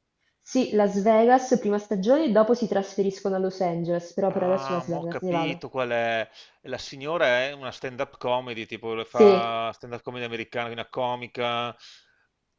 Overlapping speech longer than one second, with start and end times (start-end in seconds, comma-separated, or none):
4.3-5.6